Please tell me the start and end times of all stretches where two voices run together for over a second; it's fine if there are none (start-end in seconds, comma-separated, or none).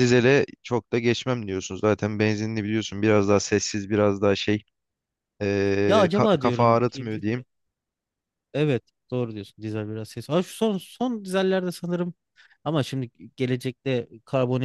5.9-7.4